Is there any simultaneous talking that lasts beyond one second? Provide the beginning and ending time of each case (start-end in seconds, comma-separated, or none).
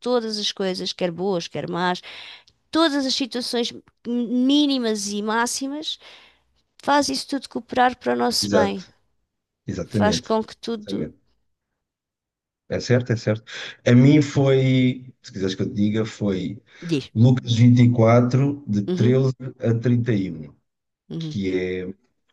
9.8-11.1